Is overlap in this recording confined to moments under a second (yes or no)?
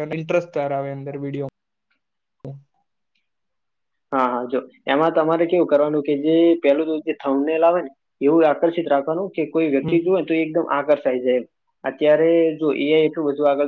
yes